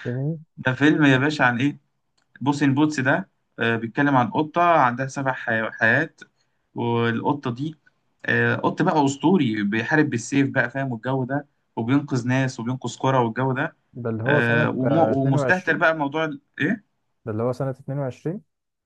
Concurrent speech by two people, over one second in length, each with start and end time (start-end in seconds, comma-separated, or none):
14.2-15.8